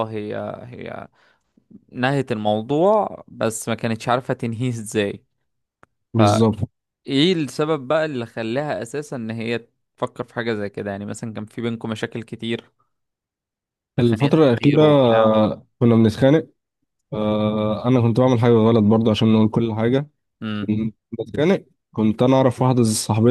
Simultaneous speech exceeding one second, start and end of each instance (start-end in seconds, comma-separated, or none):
14.0-15.4